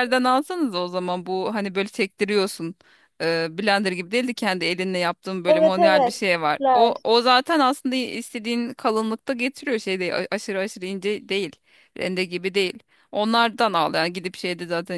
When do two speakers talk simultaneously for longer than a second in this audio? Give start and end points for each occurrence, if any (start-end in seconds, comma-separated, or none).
5.5-7.0